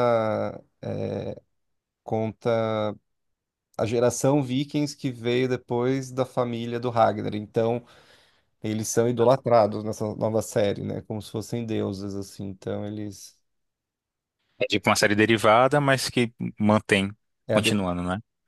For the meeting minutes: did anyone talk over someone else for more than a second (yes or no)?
no